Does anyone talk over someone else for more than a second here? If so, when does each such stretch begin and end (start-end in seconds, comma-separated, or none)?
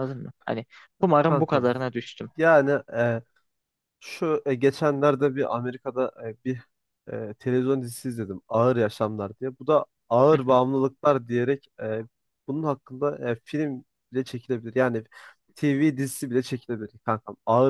none